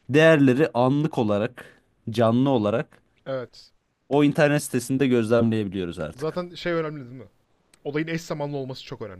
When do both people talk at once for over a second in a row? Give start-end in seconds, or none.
none